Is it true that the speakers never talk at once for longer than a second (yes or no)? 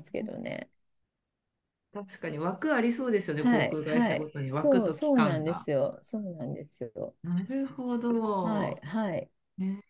no